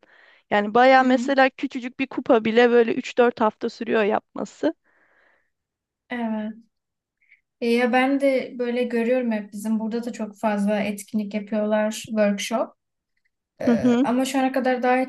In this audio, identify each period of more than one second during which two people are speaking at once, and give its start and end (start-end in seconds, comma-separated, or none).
none